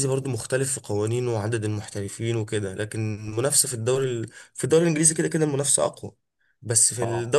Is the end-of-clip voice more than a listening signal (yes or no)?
no